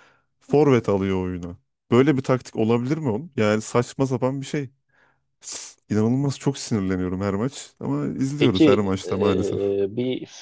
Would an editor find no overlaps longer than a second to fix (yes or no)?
no